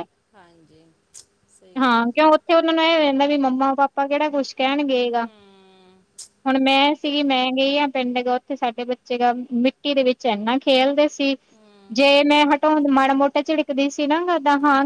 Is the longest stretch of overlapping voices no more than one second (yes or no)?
yes